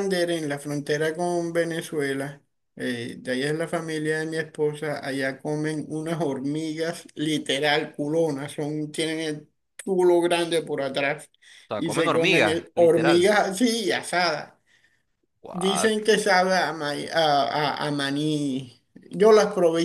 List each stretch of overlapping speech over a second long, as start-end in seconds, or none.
11.8-13.3